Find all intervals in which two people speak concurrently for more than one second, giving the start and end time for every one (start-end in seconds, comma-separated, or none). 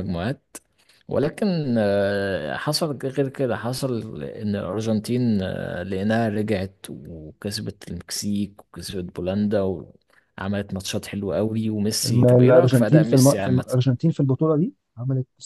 12.1-13.7